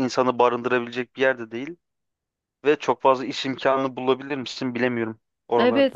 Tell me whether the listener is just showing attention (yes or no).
no